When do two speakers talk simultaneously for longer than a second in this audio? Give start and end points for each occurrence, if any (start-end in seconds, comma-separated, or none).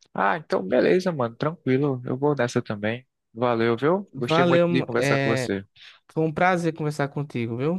4.1-5.5